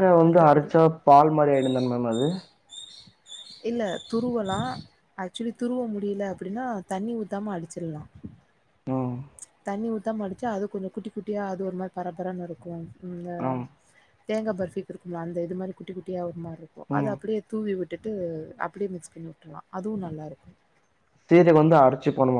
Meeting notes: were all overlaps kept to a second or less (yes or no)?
yes